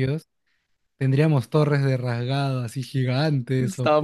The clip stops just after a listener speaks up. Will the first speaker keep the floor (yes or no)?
no